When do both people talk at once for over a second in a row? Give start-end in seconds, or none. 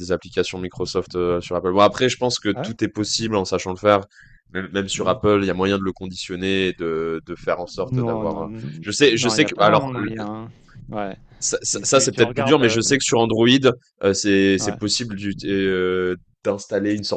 7.8-10.1, 11.6-12.8